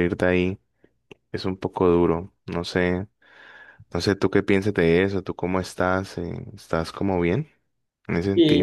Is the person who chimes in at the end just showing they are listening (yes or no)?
no